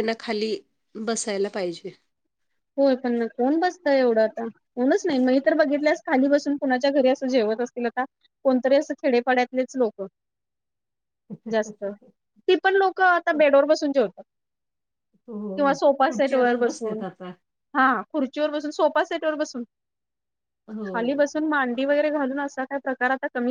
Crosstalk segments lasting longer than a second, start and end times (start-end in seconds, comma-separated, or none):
15.6-17.0